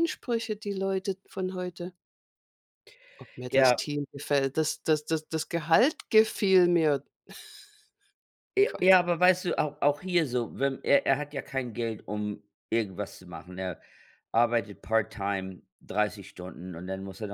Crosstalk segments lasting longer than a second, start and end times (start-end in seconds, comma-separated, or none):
none